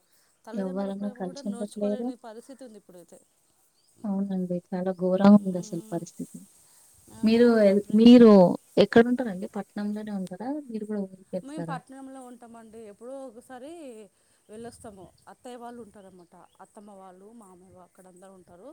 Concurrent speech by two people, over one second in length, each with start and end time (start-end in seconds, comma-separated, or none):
0.6-2.1